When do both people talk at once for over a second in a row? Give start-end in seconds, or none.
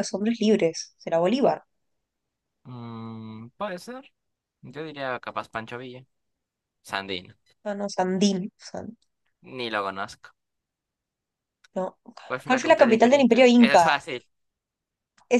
12.5-14.0